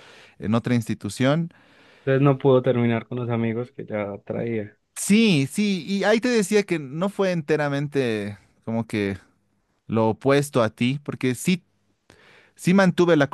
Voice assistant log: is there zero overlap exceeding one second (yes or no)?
yes